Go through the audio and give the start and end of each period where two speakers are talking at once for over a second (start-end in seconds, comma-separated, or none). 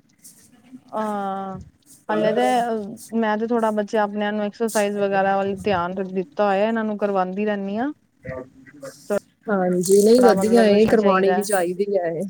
10.2-11.4